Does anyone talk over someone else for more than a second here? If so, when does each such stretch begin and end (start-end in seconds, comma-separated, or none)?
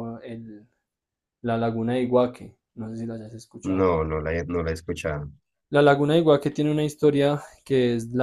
none